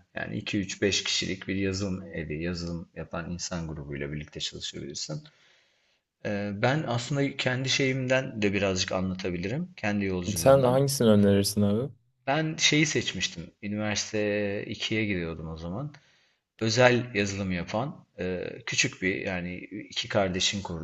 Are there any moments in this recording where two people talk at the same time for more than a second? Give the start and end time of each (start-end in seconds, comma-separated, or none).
none